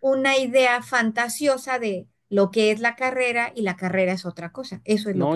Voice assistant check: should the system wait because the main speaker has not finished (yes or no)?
no